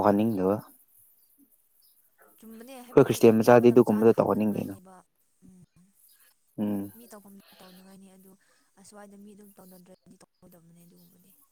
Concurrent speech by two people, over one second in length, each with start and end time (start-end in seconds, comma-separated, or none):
2.8-4.7